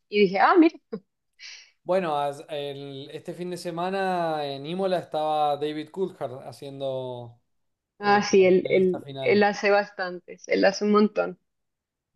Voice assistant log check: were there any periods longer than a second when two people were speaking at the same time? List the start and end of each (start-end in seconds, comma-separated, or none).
8.0-9.5